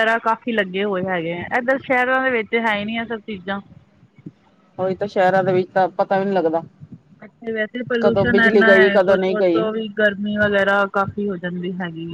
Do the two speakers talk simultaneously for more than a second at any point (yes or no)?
yes